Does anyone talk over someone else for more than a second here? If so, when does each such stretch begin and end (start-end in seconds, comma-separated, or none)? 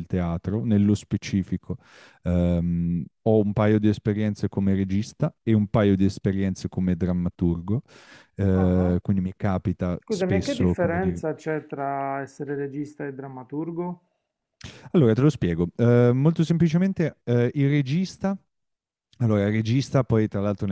10.0-11.2